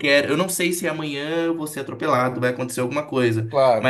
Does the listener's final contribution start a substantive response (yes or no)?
no